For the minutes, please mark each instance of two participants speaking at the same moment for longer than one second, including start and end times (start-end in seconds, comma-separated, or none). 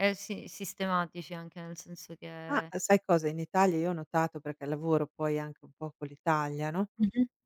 none